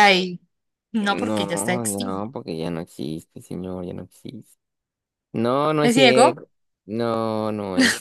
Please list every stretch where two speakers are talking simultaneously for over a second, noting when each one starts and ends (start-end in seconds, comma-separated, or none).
1.0-2.3